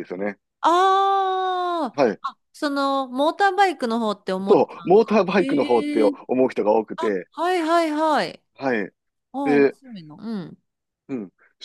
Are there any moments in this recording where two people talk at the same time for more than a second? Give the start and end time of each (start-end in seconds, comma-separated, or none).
4.5-6.2